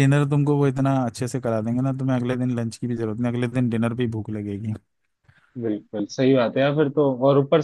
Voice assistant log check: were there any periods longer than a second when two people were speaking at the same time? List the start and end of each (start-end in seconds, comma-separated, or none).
none